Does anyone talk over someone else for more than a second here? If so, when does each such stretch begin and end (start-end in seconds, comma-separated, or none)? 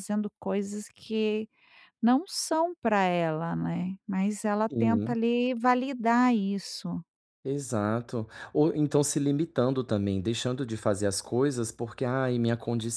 none